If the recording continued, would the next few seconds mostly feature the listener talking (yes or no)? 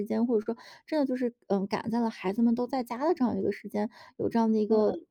no